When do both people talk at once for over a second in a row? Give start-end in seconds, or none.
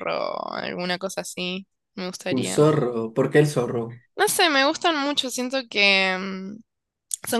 none